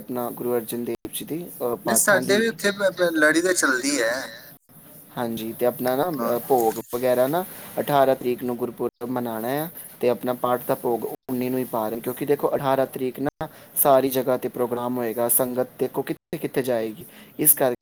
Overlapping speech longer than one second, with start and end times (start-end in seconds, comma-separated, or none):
none